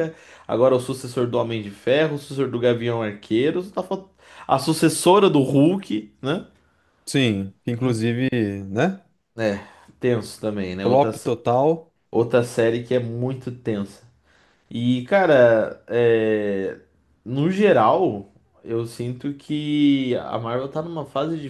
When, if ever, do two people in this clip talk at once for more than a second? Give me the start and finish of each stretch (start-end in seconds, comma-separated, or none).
none